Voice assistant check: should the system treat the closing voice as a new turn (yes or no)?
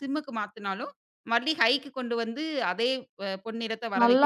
yes